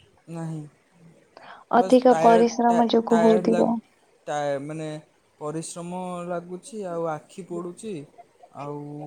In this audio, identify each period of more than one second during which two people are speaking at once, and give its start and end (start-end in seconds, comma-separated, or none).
1.8-3.7